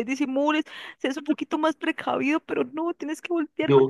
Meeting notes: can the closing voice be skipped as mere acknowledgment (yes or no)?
yes